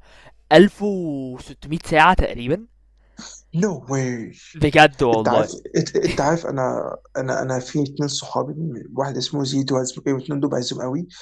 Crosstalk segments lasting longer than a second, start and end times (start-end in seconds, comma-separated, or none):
none